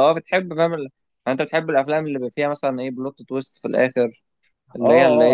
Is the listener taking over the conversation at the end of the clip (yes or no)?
yes